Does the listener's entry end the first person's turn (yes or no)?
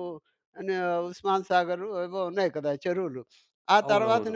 no